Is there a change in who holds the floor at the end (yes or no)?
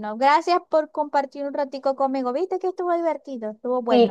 yes